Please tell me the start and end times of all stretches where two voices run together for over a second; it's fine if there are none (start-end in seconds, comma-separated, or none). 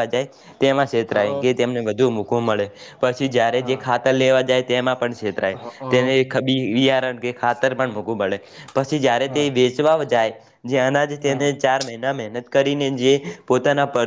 none